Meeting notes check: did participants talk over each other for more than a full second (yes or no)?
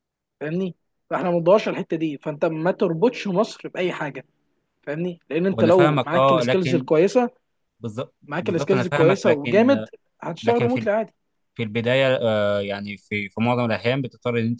yes